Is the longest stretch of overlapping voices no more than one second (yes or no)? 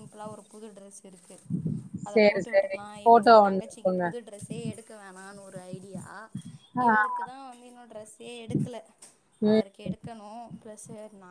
no